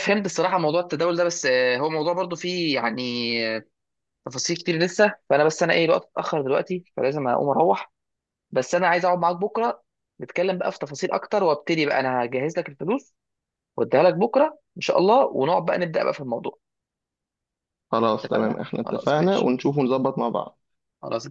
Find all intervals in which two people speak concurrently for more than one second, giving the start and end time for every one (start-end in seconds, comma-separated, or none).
18.2-19.5